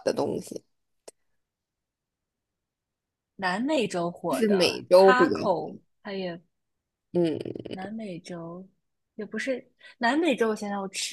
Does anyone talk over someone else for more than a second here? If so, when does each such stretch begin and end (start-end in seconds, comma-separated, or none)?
4.3-5.7